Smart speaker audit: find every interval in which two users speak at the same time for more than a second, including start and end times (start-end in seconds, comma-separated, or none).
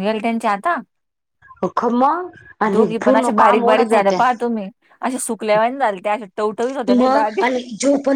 2.7-4.2